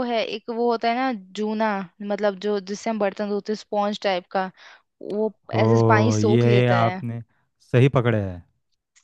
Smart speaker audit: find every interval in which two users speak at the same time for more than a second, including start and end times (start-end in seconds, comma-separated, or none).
5.5-7.0